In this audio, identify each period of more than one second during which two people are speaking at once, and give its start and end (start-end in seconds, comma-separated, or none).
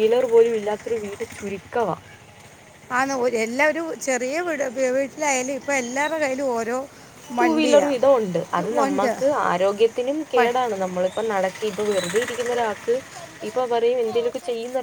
7.4-9.1